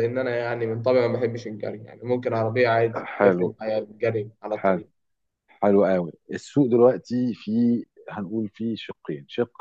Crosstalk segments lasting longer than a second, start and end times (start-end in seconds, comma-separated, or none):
none